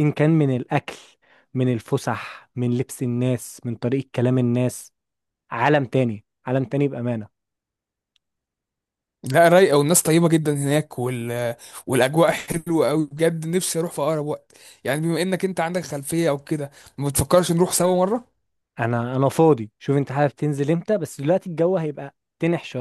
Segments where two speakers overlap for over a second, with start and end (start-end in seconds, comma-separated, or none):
none